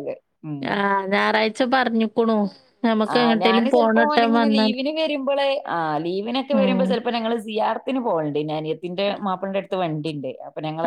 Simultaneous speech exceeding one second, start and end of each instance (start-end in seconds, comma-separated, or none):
none